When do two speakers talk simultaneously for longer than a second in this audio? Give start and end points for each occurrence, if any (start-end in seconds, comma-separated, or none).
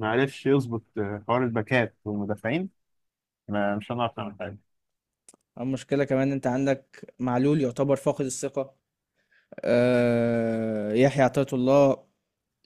none